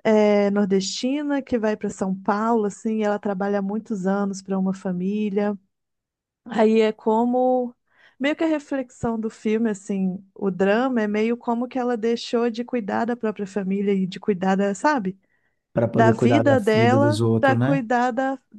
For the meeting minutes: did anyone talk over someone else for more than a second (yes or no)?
yes